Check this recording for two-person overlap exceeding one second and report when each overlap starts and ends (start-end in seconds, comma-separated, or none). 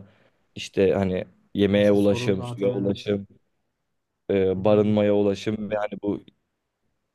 1.7-3.1